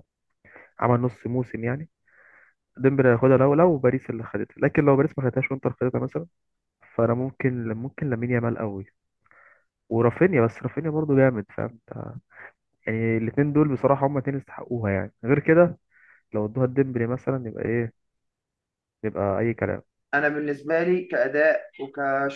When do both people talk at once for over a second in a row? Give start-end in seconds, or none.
none